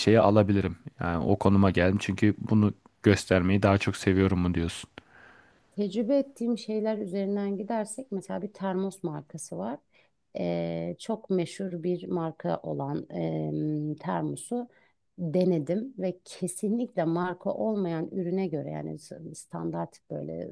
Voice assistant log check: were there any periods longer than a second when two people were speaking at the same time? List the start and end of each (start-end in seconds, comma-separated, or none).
none